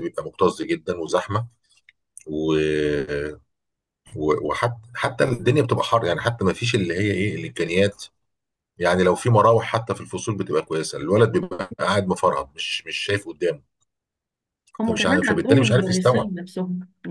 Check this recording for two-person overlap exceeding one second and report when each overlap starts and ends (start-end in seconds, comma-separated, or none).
14.8-16.3